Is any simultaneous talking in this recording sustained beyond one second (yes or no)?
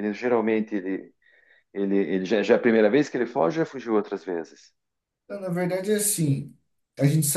no